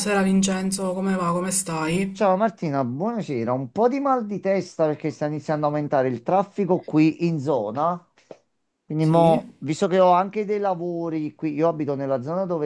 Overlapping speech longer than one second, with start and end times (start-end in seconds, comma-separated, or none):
none